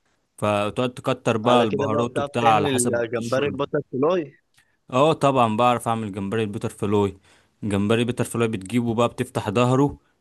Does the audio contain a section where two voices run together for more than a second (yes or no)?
yes